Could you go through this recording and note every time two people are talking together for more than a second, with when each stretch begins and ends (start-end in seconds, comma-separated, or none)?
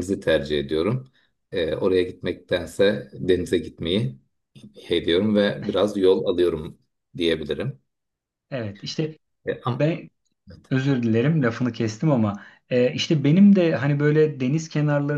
none